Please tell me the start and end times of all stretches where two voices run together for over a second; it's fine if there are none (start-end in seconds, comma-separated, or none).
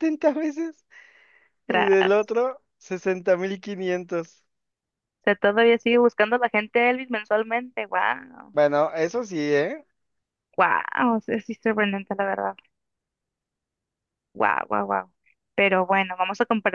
none